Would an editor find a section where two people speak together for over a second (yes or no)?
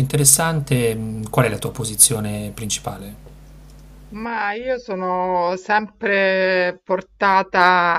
no